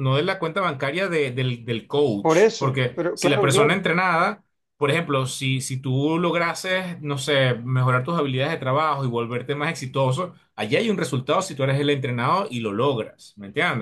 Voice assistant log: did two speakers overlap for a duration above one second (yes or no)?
yes